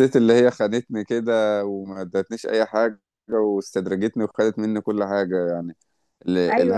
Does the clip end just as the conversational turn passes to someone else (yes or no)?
no